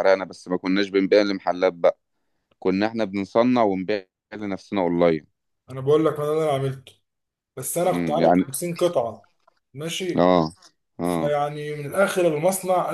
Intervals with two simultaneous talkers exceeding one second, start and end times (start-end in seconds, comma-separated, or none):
none